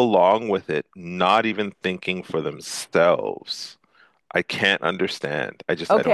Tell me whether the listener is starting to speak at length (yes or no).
yes